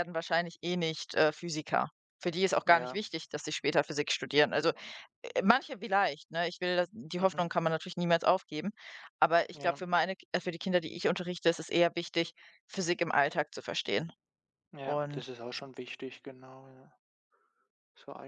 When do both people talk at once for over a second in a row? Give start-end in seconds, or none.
none